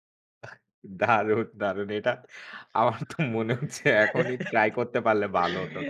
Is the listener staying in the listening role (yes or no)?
no